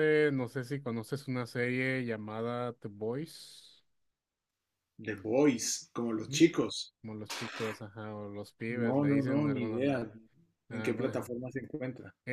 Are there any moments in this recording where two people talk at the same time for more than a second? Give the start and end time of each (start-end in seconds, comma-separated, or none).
8.8-10.0